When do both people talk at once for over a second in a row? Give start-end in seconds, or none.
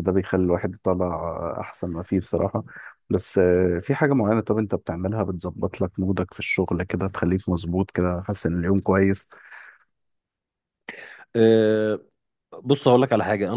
none